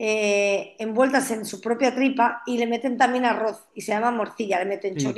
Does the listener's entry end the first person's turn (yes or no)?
yes